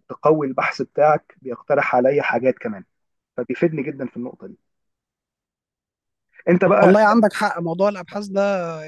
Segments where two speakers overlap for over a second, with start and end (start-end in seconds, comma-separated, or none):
none